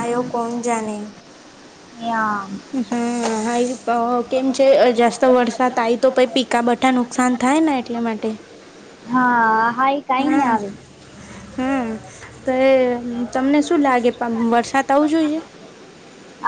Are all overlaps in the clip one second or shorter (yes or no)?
yes